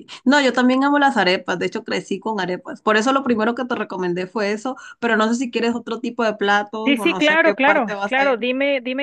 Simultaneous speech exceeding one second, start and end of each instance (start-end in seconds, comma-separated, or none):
6.8-8.5